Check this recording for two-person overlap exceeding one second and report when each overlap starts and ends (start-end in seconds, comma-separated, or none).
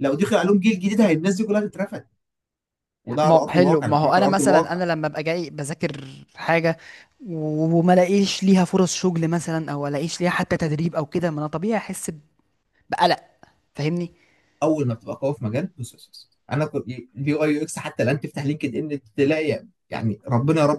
3.2-4.8